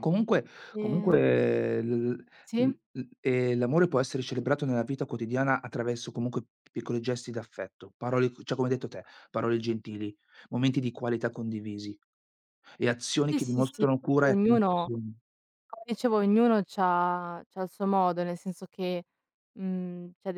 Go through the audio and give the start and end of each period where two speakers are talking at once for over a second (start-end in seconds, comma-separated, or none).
13.3-14.9